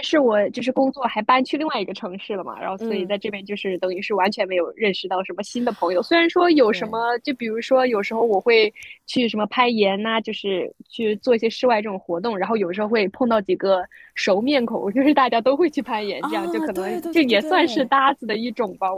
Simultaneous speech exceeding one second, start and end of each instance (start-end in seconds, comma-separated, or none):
16.2-17.9